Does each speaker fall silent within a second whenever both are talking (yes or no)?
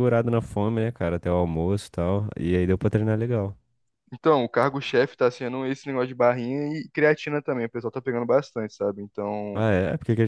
yes